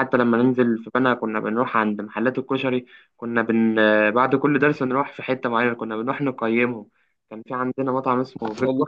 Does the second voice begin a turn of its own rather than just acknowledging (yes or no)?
no